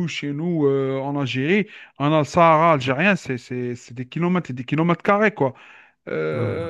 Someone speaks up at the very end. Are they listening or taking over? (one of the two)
listening